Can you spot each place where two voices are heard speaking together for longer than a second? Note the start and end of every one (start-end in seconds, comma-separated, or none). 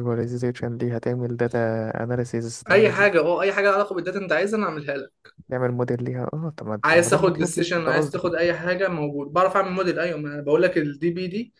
6.8-8.2